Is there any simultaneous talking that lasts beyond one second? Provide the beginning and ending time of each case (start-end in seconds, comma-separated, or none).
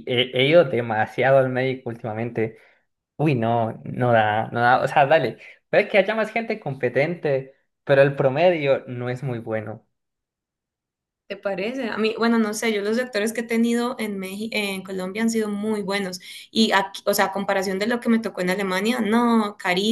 none